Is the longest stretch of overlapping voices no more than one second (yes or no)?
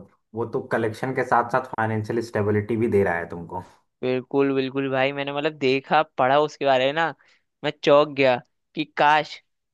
yes